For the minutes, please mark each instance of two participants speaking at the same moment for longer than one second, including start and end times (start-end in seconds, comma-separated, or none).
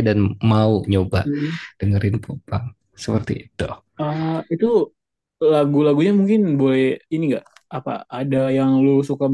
none